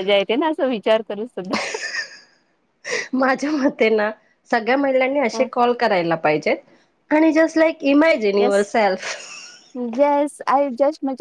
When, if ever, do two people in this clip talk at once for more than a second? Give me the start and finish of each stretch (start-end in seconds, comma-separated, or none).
none